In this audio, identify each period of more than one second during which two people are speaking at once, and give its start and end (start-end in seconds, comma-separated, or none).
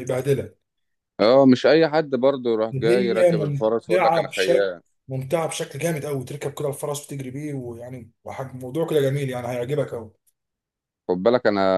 2.7-4.7